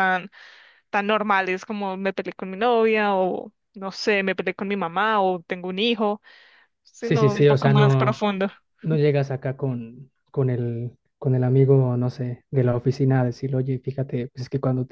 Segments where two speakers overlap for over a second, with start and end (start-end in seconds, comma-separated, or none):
7.0-8.2